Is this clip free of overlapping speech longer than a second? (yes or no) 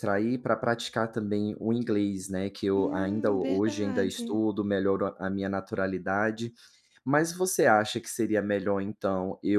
no